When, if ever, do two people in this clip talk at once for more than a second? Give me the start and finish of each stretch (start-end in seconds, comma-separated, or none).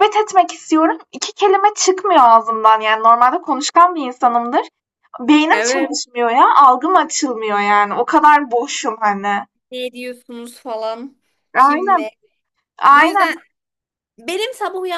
none